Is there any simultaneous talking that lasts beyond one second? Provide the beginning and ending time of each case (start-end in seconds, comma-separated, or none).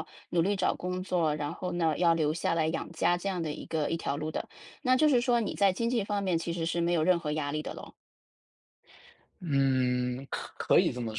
none